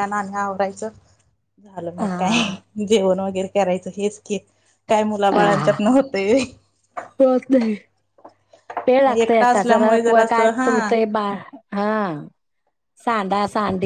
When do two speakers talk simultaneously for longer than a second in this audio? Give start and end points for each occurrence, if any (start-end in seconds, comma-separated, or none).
9.5-10.9